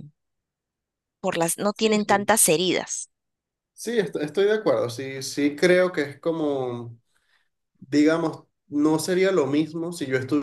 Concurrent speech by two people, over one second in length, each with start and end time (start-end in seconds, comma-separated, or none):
none